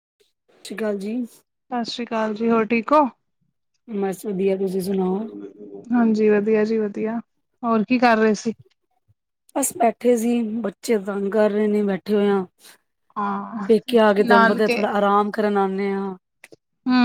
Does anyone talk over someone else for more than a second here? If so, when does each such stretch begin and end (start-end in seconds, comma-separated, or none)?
none